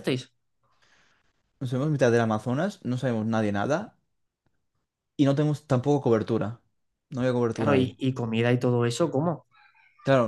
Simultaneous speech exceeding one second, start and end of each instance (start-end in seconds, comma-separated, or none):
none